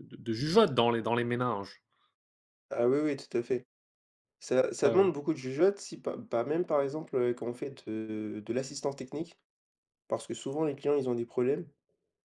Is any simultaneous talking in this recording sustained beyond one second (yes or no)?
no